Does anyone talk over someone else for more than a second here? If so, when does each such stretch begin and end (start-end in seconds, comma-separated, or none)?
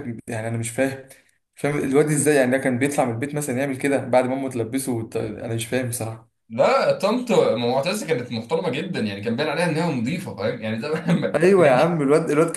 none